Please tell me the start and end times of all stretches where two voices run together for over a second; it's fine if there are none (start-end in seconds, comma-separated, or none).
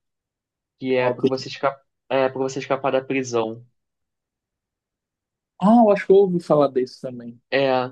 none